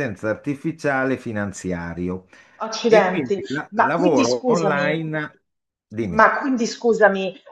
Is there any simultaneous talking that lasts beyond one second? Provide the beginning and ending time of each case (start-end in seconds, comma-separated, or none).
2.9-5.0